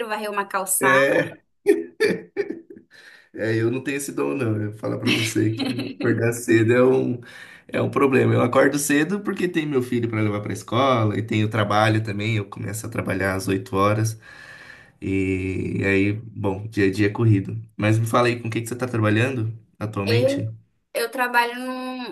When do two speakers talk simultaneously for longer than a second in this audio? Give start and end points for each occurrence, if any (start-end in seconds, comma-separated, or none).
none